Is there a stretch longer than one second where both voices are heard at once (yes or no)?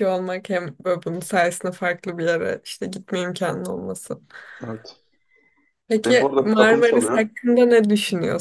yes